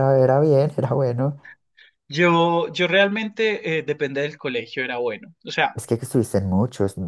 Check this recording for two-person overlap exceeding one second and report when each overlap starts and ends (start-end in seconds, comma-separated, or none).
none